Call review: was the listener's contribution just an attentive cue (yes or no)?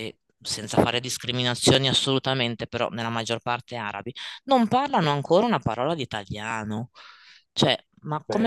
yes